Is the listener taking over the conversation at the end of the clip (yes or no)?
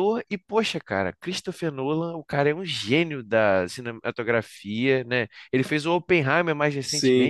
yes